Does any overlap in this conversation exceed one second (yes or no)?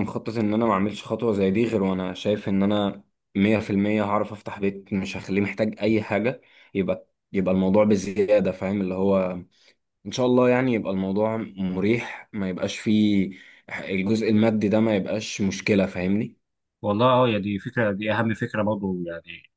no